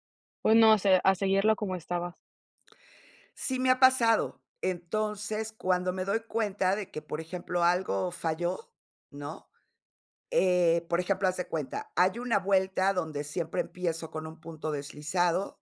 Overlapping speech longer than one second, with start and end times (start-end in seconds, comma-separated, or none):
none